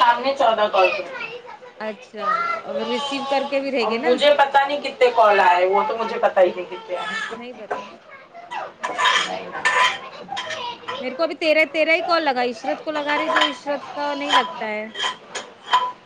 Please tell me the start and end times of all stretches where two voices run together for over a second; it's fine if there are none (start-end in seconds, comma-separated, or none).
none